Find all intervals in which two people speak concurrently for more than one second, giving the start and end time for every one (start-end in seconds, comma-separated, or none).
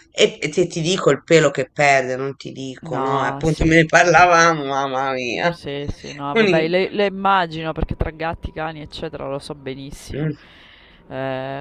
2.8-4.4